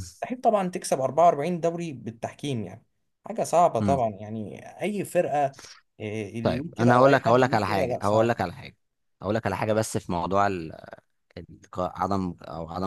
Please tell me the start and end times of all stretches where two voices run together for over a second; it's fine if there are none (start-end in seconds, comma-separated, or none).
6.4-8.3